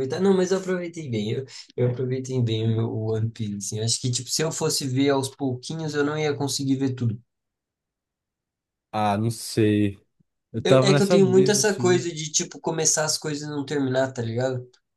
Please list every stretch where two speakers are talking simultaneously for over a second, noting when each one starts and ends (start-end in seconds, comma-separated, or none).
10.6-12.1